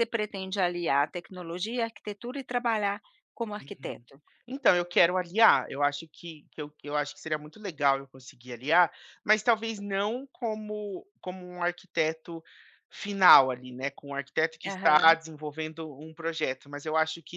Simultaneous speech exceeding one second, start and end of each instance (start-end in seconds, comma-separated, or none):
none